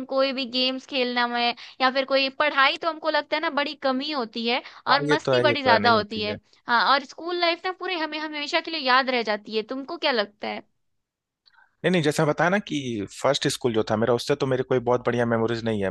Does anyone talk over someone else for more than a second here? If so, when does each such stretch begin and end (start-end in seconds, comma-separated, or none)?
4.9-6.4